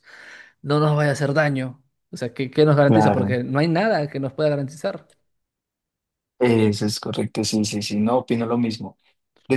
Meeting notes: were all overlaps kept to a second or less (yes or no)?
yes